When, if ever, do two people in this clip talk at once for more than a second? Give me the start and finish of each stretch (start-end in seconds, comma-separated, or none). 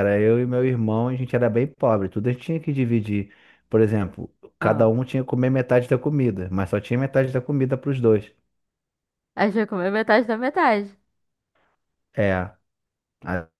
none